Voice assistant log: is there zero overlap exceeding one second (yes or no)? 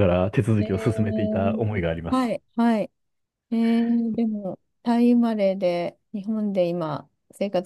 no